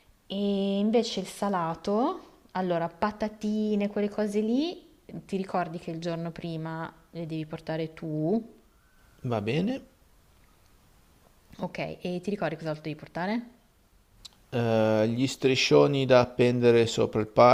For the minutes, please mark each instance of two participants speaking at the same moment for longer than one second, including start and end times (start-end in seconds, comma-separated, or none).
none